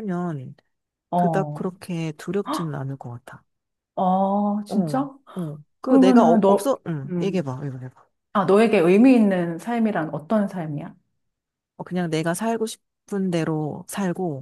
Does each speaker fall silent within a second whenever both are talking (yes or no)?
no